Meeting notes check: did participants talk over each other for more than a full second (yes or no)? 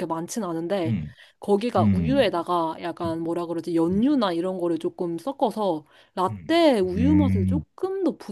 yes